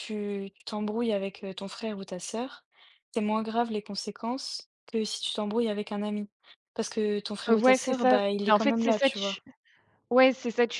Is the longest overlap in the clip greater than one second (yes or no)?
yes